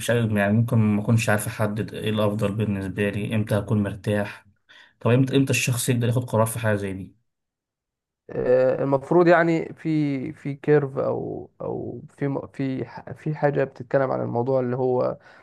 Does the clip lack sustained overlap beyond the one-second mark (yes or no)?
yes